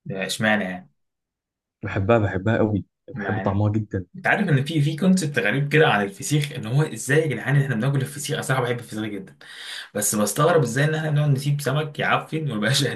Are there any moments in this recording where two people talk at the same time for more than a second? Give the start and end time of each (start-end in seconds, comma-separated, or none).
none